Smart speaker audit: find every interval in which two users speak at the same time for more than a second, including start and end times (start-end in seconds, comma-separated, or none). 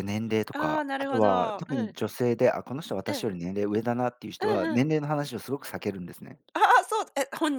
0.5-2.0